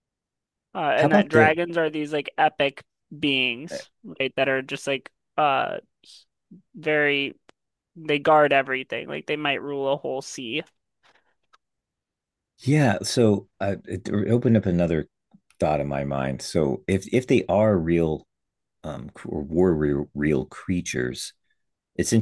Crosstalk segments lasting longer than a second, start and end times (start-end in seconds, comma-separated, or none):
none